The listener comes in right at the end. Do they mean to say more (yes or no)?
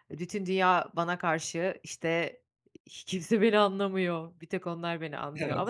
no